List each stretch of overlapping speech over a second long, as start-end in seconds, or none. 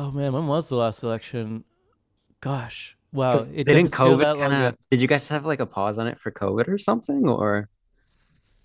3.3-4.7